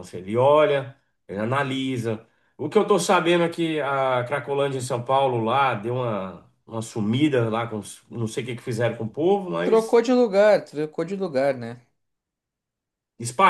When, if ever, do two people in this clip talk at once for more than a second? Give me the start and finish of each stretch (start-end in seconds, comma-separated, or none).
none